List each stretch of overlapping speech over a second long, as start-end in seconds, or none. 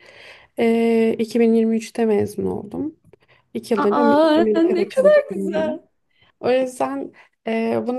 3.8-5.8